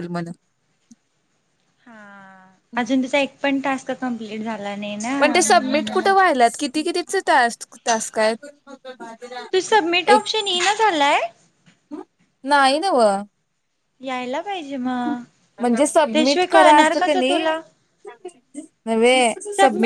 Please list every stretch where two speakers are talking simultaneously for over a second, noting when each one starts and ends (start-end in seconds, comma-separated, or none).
16.1-17.4